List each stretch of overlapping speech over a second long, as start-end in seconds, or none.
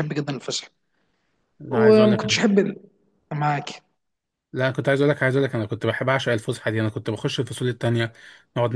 none